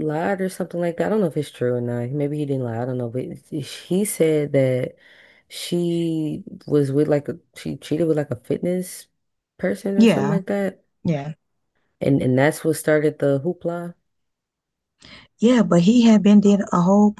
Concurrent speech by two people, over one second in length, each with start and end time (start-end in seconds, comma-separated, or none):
none